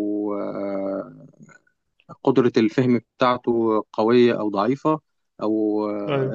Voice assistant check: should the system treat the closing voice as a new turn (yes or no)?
no